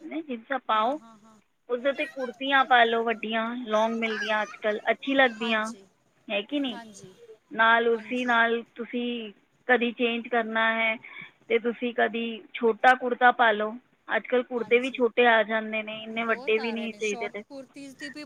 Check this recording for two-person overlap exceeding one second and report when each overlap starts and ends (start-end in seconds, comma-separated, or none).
16.1-17.4